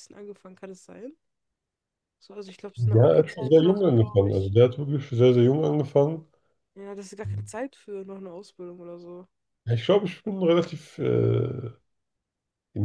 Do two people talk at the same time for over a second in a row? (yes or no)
yes